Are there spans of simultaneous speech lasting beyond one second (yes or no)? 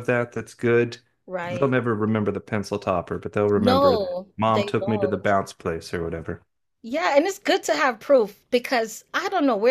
yes